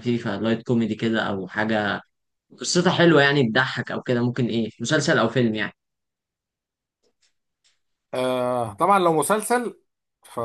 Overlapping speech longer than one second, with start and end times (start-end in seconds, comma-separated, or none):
none